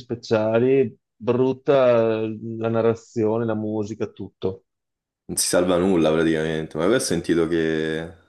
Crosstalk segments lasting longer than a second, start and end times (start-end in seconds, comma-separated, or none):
none